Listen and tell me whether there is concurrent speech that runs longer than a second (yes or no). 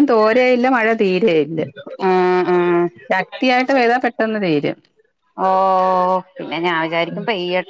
no